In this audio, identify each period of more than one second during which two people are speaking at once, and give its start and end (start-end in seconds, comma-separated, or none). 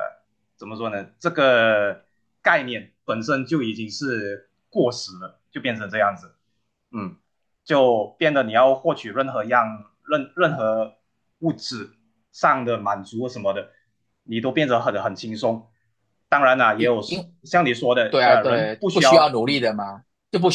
18.1-19.7